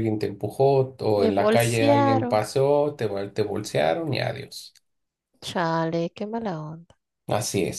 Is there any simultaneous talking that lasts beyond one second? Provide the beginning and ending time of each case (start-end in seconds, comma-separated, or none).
1.2-2.4